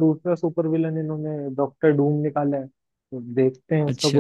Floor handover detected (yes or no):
no